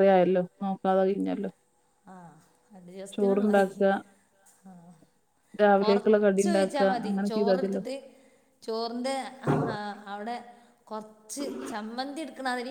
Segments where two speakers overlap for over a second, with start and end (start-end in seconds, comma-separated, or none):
5.8-7.8